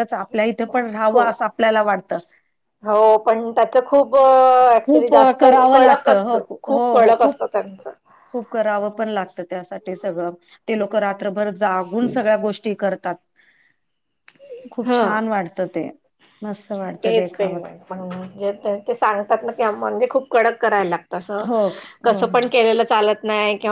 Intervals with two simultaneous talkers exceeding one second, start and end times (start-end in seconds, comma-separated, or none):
4.8-7.4